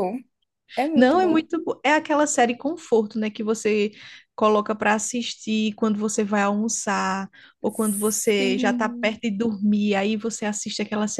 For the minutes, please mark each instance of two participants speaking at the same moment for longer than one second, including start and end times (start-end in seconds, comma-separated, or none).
7.7-9.2